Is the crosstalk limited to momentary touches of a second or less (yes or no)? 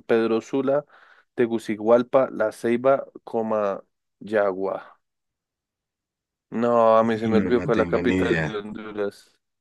no